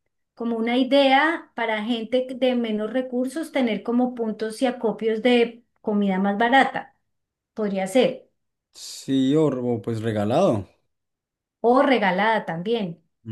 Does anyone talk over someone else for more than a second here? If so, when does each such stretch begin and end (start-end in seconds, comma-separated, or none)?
none